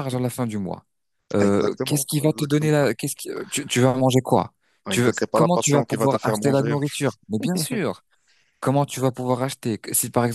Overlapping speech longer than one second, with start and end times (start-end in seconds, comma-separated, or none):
1.4-2.8, 4.9-6.8